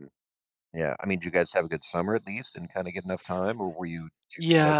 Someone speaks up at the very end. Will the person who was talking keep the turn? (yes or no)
no